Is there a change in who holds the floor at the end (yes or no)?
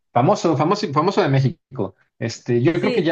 no